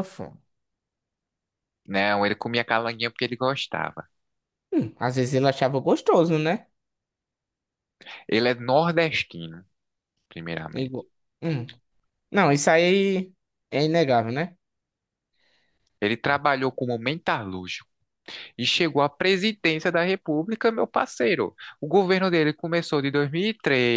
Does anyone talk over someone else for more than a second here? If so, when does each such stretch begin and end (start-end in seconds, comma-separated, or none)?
none